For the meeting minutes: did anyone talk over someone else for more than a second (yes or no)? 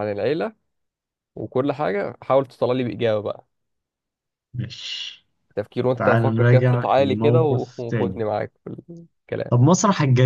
yes